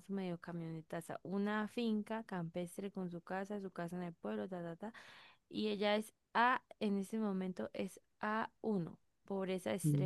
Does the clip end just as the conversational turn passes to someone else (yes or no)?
no